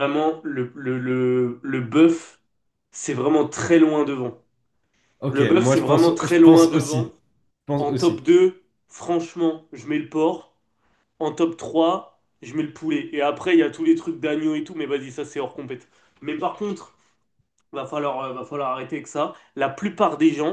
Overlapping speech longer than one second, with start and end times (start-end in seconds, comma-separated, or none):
5.3-7.1